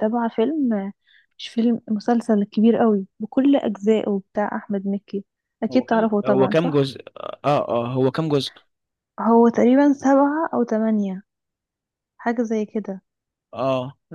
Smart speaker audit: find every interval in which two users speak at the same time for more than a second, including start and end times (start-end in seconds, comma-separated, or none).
5.7-6.9